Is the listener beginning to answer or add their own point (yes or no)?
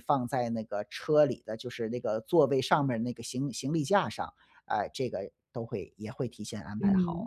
yes